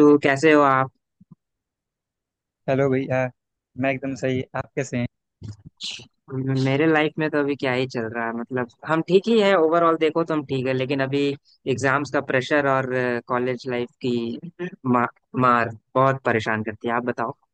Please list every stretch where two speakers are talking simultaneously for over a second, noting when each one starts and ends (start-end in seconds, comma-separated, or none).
none